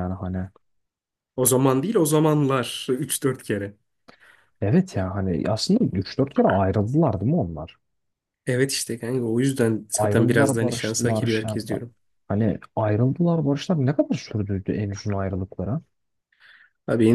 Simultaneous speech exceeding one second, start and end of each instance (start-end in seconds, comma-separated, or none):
10.0-11.8